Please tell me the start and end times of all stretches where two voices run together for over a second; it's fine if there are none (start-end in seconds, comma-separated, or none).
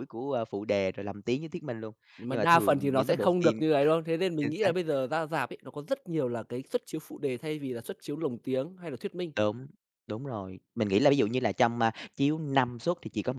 2.3-3.6